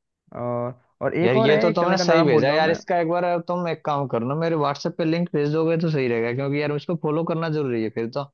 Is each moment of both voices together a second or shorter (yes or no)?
no